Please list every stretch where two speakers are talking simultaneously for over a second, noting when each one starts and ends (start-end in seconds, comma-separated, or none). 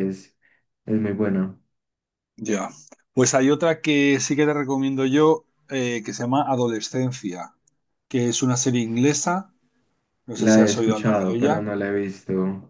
10.3-11.7